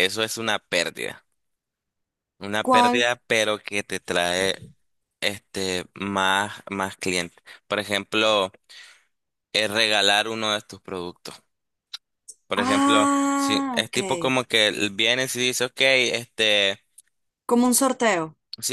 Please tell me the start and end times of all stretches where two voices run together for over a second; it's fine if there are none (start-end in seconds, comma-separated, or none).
12.6-14.0